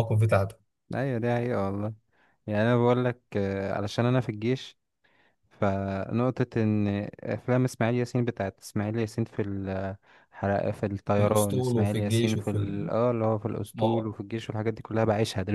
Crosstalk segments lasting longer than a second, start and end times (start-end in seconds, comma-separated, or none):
11.2-12.8